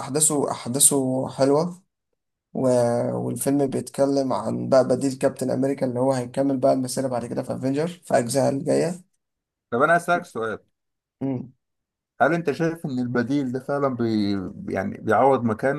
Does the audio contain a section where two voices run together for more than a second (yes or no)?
no